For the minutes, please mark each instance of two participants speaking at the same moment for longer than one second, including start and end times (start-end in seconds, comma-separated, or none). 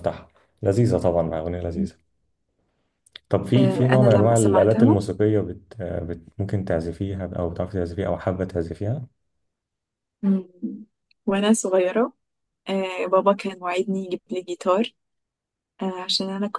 3.6-5.0